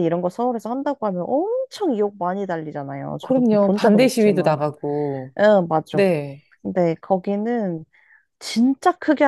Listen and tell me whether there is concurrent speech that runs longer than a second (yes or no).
yes